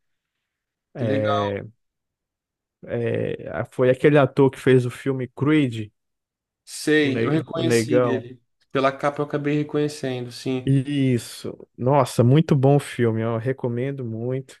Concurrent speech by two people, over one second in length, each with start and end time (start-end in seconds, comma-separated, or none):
7.0-8.3